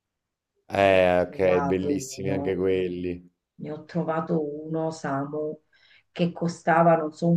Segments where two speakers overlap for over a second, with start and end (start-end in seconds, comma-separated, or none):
0.8-2.4